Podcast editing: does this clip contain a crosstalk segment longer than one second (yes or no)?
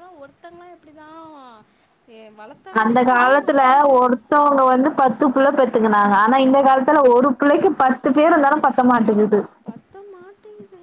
no